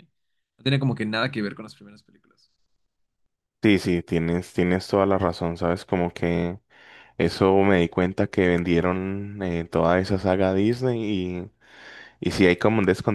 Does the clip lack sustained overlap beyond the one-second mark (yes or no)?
yes